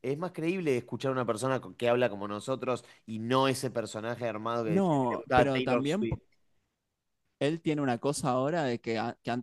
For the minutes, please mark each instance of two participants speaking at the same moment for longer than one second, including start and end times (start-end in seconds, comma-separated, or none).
4.6-6.1